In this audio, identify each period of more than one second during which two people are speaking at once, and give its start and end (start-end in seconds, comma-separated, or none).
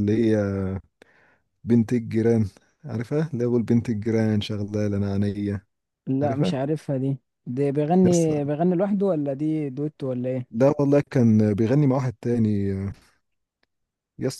none